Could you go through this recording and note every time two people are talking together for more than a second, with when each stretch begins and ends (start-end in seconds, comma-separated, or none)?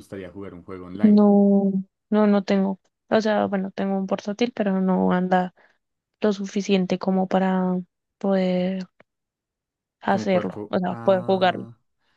10.1-11.7